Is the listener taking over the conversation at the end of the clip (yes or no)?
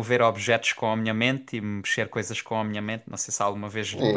yes